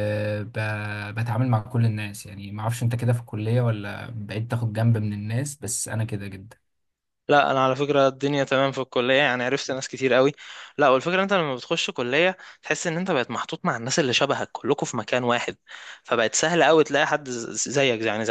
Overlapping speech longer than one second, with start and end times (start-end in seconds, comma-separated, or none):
none